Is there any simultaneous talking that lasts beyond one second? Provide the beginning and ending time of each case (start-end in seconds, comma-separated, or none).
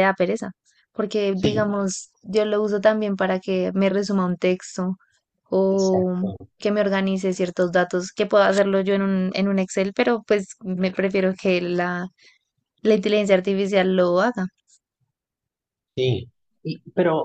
none